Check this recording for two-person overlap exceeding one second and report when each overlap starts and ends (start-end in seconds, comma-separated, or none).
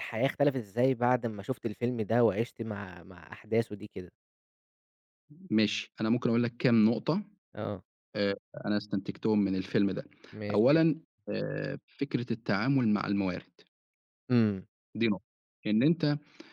none